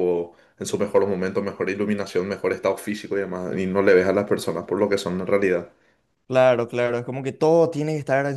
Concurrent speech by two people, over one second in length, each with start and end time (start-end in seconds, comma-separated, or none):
none